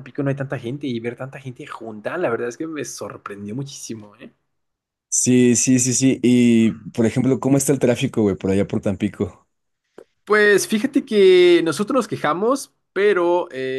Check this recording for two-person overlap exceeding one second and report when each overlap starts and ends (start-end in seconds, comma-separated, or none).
none